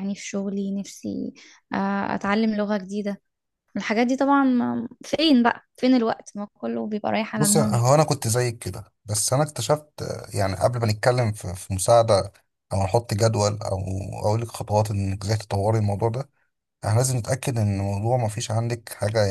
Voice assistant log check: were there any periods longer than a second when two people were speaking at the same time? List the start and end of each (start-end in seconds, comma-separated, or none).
none